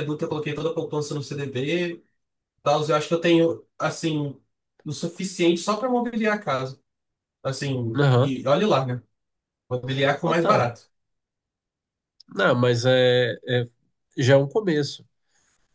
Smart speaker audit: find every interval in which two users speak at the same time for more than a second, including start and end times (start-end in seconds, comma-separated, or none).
none